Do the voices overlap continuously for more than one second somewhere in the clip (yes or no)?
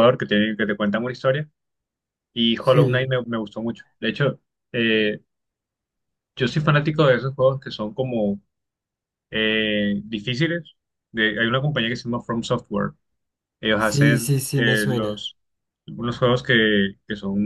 yes